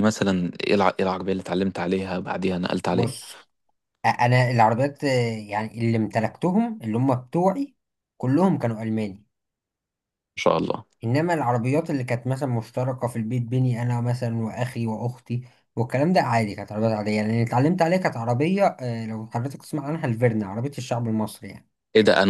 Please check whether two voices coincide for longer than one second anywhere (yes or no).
no